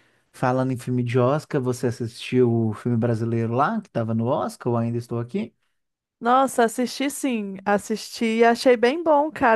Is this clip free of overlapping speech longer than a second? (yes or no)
yes